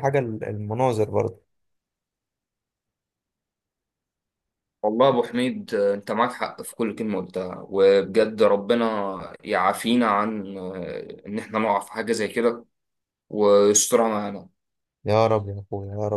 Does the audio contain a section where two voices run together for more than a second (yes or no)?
no